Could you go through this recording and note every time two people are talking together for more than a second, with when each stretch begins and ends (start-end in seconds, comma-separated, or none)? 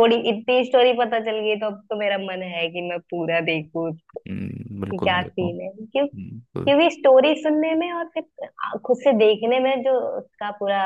5.0-6.7